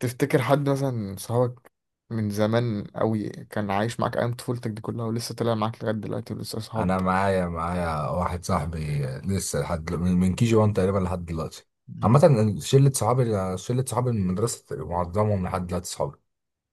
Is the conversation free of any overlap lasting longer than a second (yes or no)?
yes